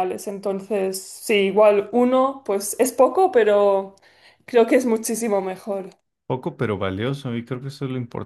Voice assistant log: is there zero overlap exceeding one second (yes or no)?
yes